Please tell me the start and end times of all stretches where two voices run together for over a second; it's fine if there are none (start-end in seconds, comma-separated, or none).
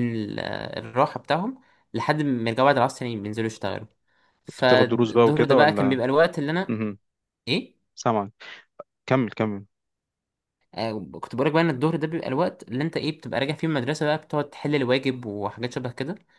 4.5-6.0